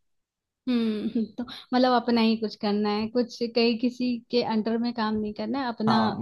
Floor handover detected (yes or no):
yes